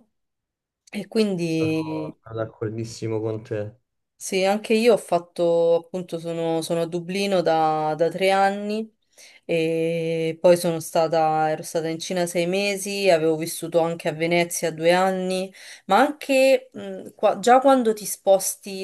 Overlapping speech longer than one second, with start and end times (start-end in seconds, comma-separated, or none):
none